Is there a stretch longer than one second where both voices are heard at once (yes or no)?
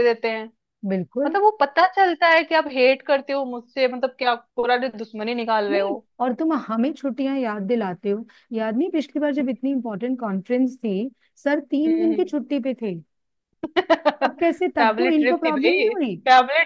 yes